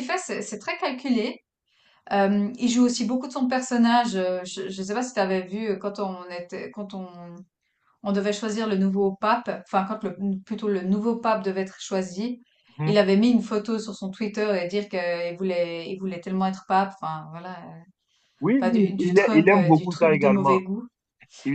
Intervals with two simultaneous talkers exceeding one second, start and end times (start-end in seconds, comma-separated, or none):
18.6-20.6